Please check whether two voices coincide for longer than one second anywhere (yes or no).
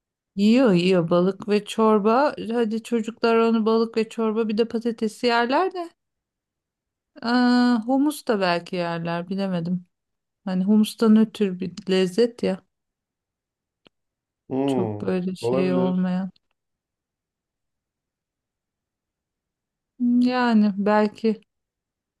yes